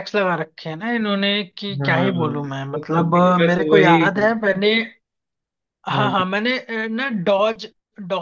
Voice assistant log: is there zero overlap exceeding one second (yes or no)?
no